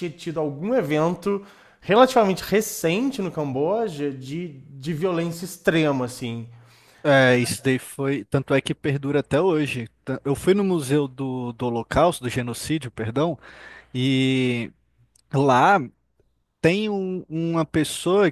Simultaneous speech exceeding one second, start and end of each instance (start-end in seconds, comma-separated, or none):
none